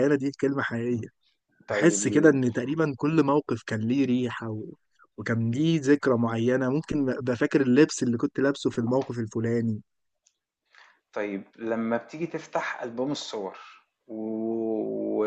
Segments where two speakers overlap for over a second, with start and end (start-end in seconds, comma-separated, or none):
none